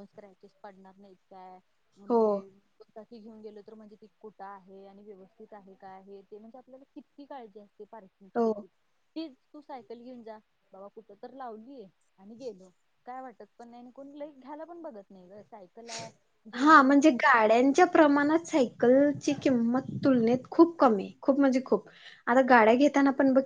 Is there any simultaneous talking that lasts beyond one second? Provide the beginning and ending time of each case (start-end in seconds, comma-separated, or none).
none